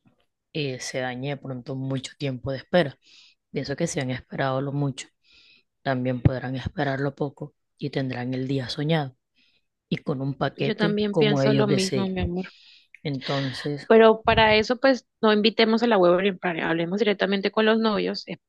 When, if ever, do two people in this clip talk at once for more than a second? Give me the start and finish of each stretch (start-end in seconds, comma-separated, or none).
10.6-12.1